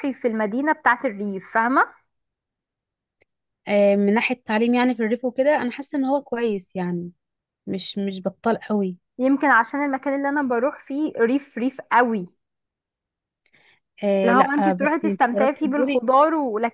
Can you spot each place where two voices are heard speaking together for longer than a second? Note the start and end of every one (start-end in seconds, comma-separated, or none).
14.2-16.0